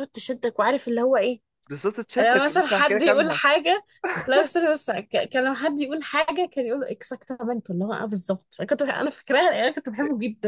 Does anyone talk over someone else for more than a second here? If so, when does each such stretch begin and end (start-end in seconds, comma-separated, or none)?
2.2-3.4